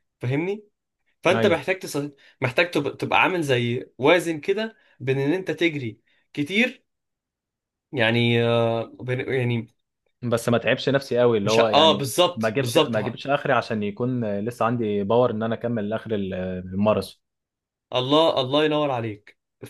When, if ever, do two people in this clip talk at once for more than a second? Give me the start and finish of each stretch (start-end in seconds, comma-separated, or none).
11.4-13.2